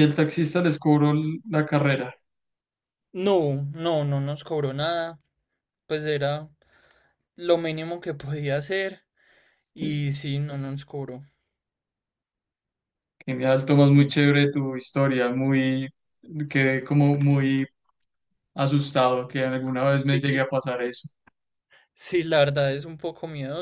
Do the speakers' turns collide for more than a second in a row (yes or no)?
no